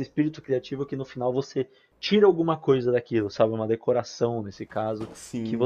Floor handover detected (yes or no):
no